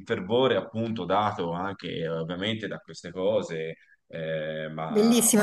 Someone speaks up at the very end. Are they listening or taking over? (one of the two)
taking over